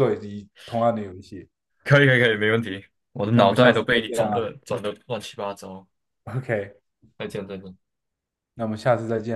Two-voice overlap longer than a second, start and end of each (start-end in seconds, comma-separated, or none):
3.3-4.5